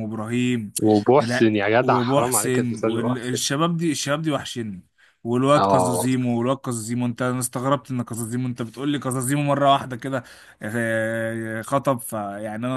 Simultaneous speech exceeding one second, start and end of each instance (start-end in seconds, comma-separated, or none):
1.2-3.4